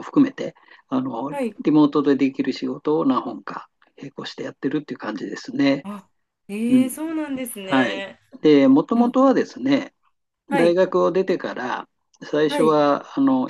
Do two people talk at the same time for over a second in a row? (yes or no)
no